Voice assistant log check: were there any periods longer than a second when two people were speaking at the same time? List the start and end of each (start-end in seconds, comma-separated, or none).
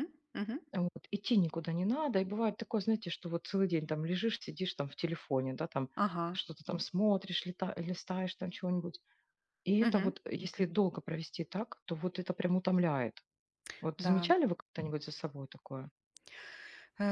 none